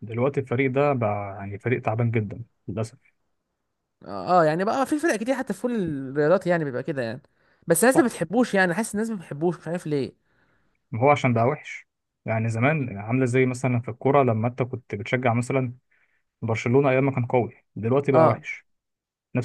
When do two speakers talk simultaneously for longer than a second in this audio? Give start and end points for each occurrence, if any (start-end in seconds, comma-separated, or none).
none